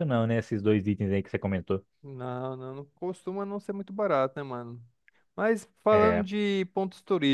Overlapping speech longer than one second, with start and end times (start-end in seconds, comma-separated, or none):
none